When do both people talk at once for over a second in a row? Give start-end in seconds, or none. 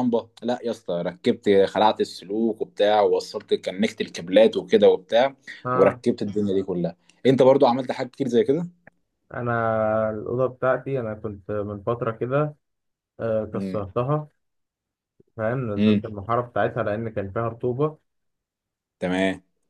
none